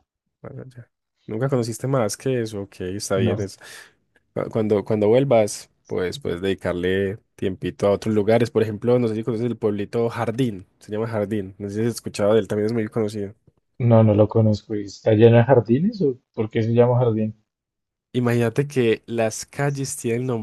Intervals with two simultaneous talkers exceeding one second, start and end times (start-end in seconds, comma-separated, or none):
none